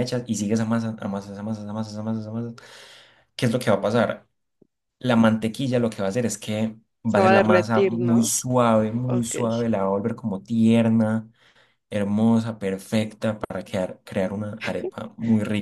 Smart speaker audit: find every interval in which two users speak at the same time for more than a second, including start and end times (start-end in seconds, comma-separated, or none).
7.0-8.3